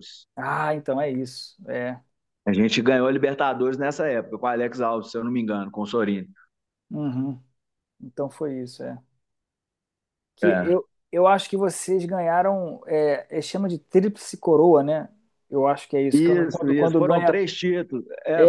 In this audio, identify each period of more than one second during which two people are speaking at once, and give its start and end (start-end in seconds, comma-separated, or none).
16.1-17.3